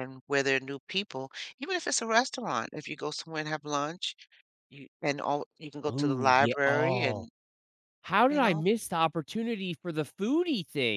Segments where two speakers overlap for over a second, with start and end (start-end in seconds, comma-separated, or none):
5.9-7.3